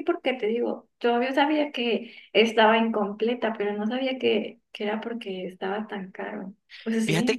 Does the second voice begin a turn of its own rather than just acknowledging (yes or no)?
yes